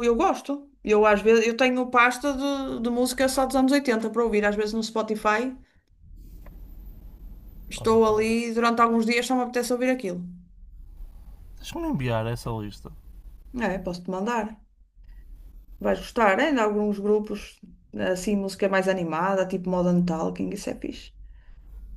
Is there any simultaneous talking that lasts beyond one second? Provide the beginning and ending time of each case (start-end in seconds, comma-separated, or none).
none